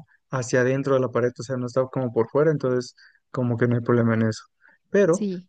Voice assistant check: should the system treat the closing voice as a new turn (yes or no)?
no